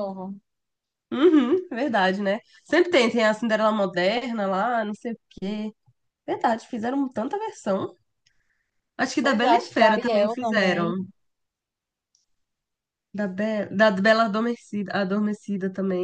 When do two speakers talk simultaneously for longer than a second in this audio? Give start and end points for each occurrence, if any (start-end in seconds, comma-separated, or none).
9.2-10.9